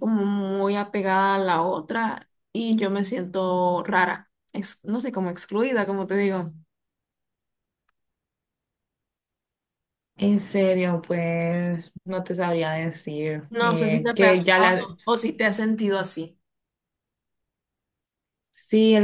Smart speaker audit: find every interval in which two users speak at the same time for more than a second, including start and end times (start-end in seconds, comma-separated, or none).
13.6-14.9